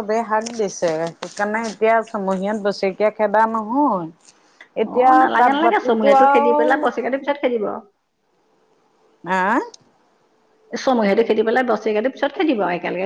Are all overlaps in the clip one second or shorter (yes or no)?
yes